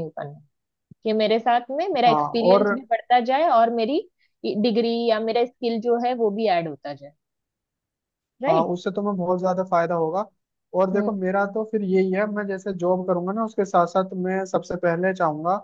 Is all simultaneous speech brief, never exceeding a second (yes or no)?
yes